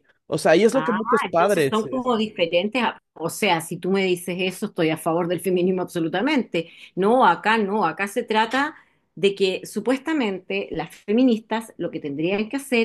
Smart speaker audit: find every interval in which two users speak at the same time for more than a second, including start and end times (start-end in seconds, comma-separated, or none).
0.7-2.1